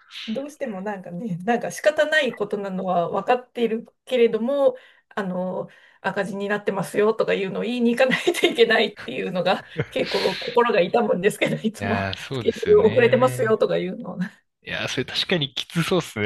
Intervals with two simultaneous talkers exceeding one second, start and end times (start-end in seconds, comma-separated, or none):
11.8-13.6